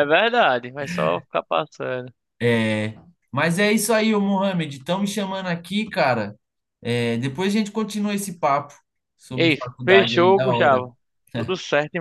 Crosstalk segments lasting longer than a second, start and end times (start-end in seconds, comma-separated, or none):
9.3-10.8